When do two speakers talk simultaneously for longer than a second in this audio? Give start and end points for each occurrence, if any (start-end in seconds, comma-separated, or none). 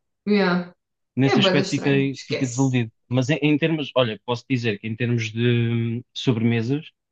1.2-2.8